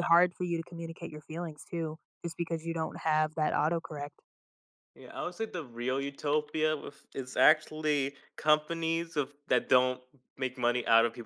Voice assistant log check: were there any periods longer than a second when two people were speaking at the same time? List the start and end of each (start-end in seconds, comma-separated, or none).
none